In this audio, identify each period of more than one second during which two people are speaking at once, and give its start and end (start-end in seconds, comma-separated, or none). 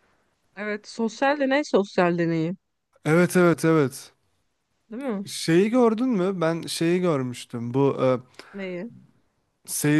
none